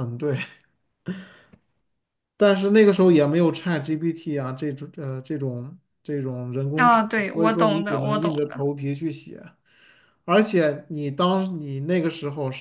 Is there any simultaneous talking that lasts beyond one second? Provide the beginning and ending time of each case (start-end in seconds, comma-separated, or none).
6.8-8.6